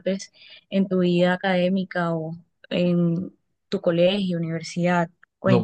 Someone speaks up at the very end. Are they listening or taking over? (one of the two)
taking over